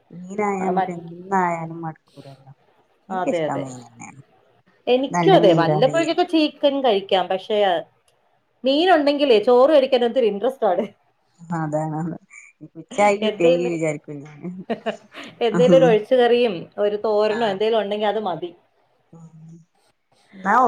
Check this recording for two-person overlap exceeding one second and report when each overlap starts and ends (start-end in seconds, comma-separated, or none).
none